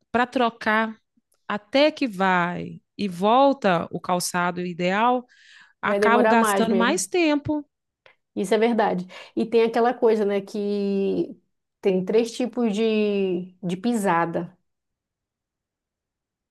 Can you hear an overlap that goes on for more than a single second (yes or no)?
yes